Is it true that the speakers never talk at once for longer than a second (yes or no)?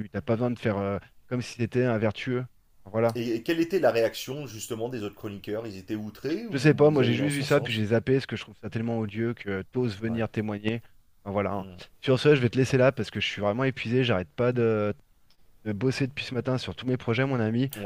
no